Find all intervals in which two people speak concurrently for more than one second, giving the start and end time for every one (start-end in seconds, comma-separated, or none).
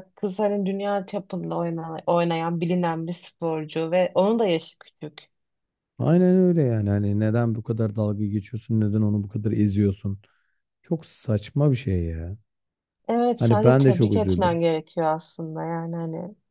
13.4-14.6